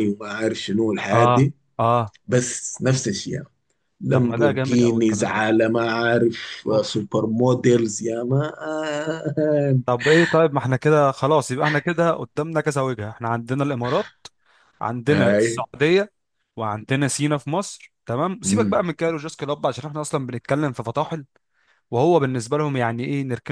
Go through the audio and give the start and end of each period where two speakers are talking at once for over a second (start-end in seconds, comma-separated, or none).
4.1-5.5